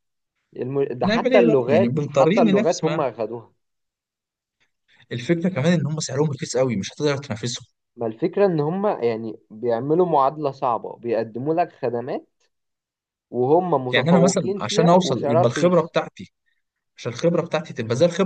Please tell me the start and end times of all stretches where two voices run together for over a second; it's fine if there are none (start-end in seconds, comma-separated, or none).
1.0-3.1, 13.9-15.9